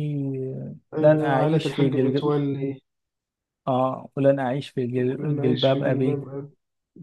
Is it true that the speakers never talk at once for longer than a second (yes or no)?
no